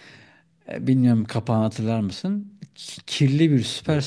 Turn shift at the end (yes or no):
no